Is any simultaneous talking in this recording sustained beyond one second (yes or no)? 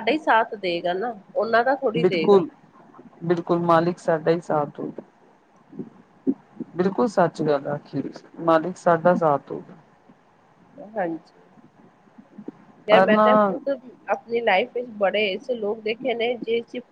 no